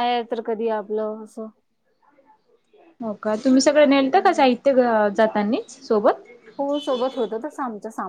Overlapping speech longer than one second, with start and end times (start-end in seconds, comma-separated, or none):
none